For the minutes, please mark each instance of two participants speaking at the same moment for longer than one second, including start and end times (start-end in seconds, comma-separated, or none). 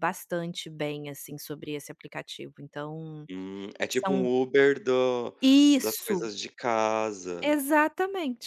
none